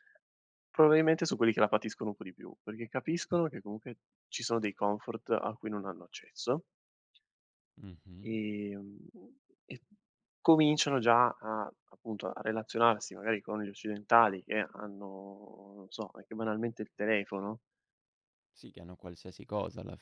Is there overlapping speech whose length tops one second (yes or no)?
no